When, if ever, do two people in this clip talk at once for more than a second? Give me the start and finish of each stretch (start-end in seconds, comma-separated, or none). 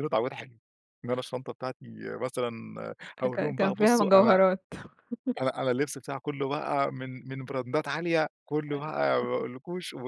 3.2-4.4